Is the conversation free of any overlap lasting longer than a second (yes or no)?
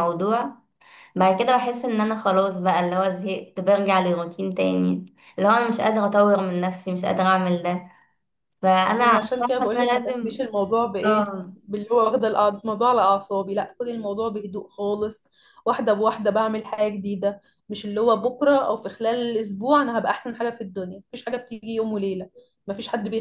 no